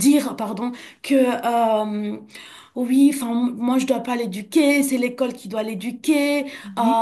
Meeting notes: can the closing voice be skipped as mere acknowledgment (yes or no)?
yes